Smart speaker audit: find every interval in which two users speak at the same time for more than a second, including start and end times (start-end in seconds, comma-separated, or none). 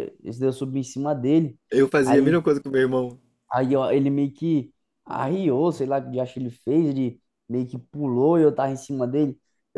none